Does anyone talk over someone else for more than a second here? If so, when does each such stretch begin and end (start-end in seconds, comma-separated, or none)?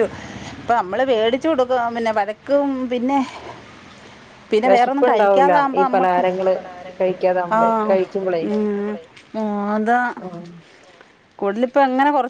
4.7-6.2